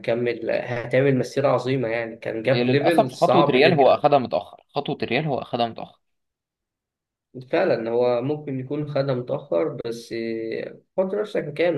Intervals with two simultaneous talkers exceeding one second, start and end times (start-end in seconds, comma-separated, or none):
2.5-4.1